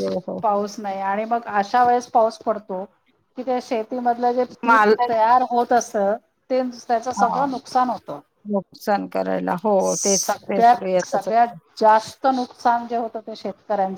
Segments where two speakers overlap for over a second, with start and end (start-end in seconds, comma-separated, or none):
9.9-11.6